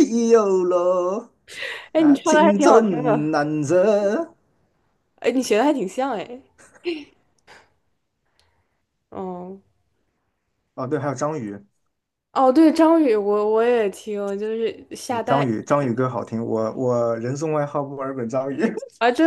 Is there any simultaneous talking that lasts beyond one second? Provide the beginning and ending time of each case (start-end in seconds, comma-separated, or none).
1.9-3.3